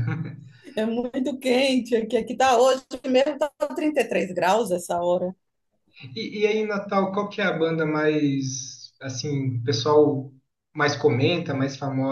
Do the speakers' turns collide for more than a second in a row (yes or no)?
no